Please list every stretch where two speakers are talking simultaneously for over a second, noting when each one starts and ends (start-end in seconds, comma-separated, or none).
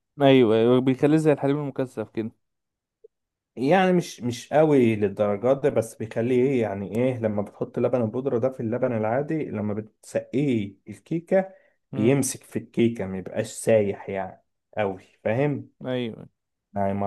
none